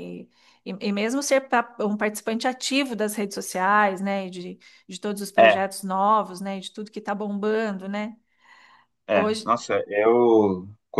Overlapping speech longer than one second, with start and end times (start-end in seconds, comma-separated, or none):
none